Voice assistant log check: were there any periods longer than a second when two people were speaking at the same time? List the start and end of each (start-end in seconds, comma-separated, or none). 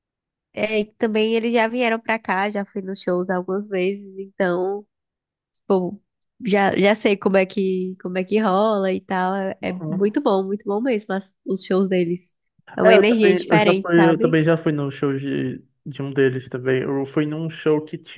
12.8-14.4